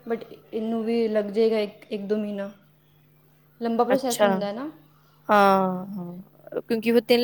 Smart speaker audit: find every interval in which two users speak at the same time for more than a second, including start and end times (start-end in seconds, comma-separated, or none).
none